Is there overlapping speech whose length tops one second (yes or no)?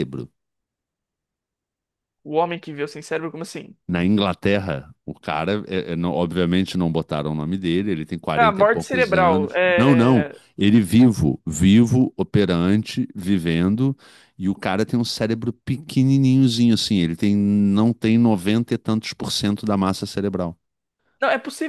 yes